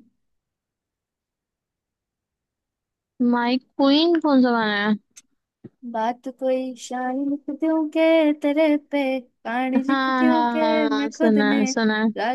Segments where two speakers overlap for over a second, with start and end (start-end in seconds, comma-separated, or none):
9.9-11.7